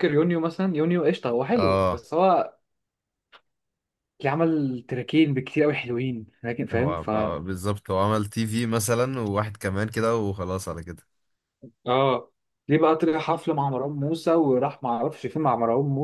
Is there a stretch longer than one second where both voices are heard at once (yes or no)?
no